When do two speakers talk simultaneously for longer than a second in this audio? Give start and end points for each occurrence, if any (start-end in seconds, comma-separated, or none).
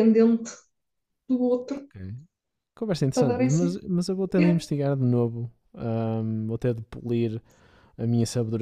none